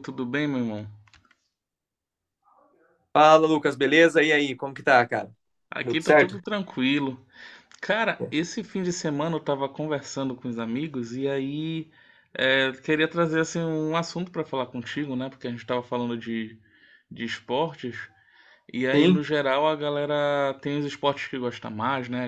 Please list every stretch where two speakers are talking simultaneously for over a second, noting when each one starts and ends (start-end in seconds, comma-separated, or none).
none